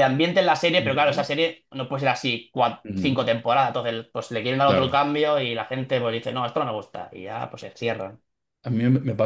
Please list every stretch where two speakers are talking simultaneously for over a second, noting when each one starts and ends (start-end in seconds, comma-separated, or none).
none